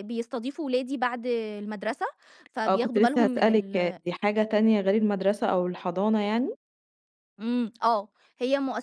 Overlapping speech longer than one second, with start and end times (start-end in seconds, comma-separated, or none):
2.7-4.0